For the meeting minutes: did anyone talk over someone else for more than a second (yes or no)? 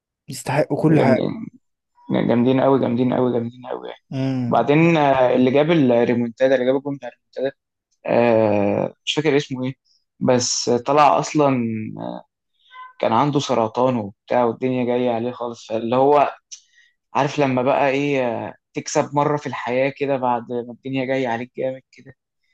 no